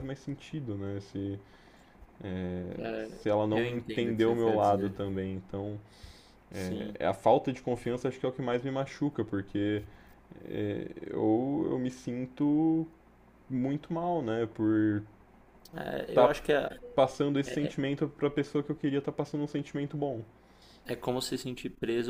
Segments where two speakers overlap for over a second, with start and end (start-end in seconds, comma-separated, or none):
3.2-5.0